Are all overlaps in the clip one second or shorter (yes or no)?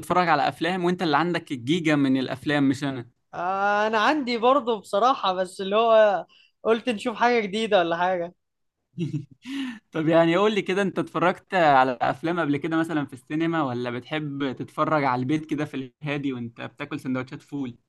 yes